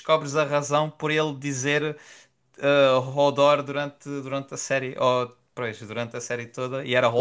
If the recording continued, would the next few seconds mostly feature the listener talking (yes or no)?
yes